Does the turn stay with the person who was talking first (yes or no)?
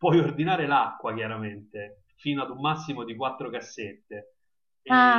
no